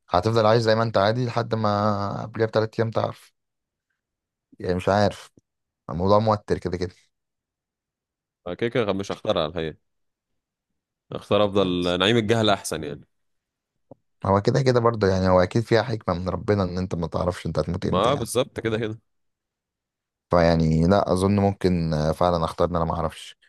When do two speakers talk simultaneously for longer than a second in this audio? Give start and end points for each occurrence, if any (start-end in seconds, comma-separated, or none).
none